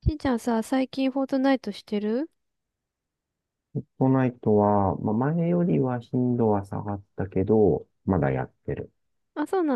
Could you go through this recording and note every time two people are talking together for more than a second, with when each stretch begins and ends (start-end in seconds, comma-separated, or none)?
none